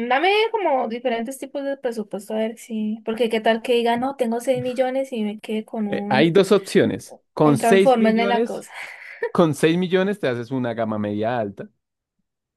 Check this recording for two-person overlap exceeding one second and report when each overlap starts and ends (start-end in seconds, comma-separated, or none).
7.4-8.7